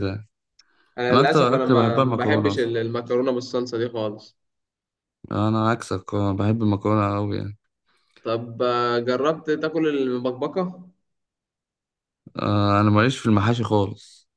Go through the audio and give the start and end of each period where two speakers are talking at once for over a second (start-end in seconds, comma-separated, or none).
1.1-2.7